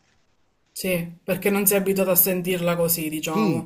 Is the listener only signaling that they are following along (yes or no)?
no